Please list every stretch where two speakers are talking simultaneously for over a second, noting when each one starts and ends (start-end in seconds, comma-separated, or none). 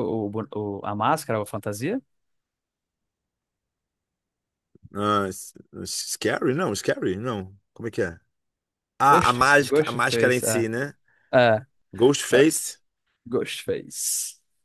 9.1-10.7